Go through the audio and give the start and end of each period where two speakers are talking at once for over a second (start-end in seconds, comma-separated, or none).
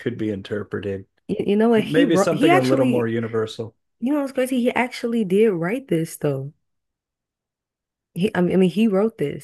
1.8-3.1